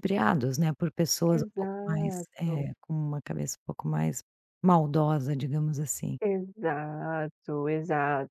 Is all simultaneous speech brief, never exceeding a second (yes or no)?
no